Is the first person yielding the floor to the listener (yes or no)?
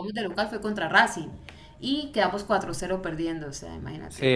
yes